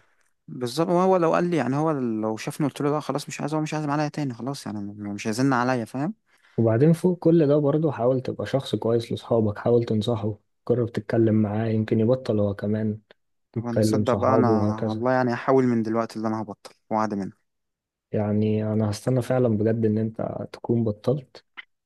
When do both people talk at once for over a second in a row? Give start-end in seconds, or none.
13.6-15.1